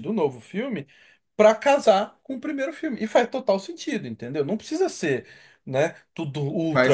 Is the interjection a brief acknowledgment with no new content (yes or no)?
no